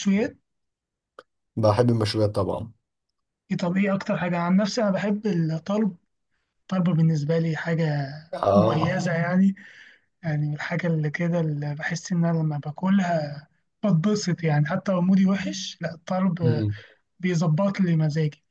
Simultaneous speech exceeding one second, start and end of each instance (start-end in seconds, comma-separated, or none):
none